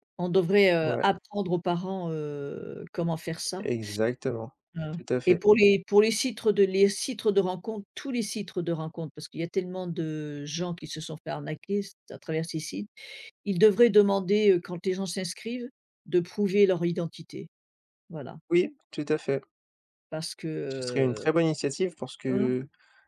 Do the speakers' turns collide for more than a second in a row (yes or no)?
no